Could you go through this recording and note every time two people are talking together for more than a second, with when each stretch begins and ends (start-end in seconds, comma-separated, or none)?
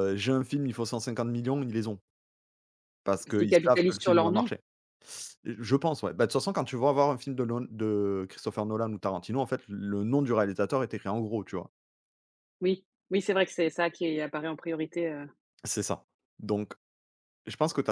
3.2-4.5